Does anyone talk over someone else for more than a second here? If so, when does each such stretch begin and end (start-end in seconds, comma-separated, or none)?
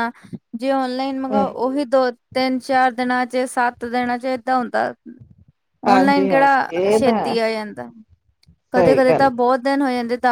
5.9-7.3